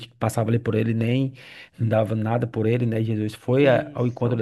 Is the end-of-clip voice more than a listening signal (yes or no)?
no